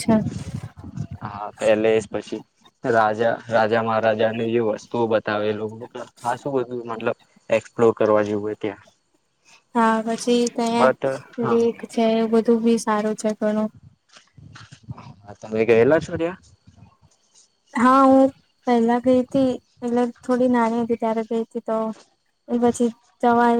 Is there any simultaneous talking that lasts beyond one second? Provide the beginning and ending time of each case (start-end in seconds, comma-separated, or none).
none